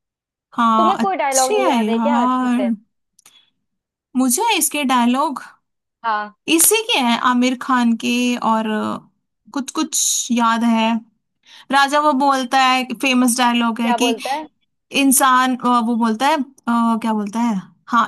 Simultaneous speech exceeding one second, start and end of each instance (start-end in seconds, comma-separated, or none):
0.8-2.7